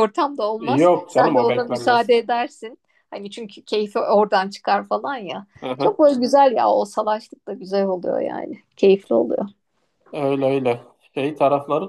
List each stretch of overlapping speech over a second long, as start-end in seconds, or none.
0.6-2.1